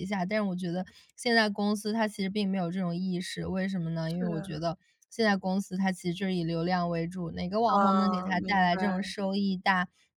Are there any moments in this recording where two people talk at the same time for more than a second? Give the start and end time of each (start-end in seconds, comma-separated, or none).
7.7-9.0